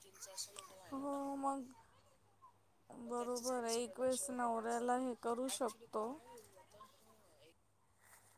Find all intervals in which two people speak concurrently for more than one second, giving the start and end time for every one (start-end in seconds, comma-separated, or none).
3.1-4.9